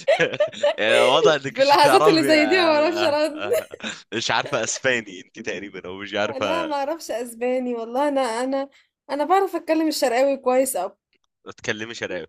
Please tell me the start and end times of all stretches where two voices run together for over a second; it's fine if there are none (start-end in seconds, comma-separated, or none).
1.6-3.3